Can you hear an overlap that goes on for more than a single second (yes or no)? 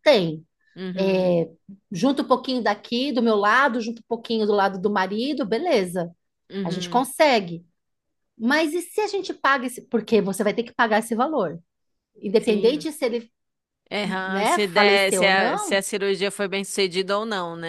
yes